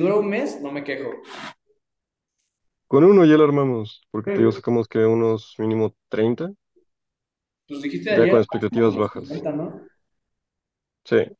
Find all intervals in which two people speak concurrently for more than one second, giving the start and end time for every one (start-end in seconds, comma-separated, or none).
8.1-9.3